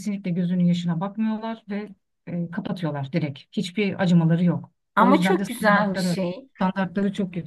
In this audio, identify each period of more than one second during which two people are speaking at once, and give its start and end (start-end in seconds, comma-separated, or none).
5.0-6.2